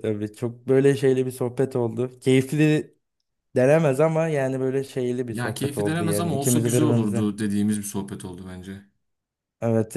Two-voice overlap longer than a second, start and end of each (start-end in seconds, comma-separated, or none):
5.3-7.3